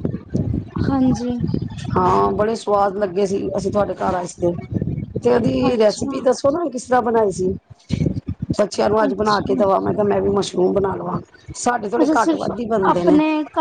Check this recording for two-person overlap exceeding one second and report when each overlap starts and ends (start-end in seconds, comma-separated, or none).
none